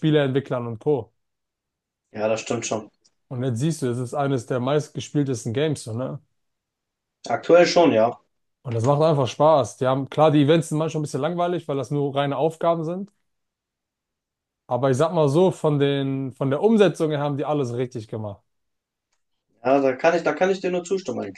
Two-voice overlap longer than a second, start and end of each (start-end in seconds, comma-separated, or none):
none